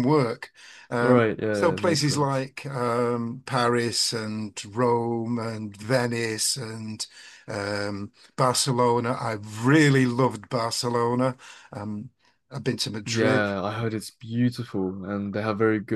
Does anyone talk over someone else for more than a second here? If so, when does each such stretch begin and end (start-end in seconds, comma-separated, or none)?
1.0-2.3